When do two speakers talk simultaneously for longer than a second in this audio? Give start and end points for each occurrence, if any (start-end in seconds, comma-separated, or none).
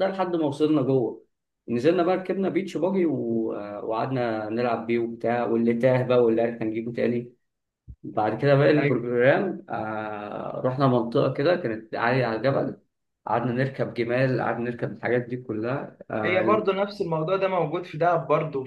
none